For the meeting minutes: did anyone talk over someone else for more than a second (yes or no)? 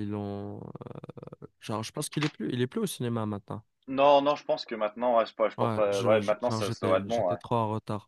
yes